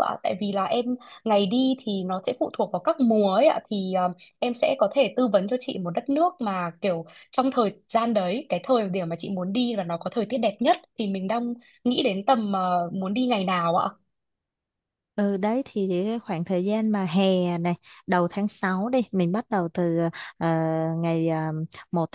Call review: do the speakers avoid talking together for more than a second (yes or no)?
yes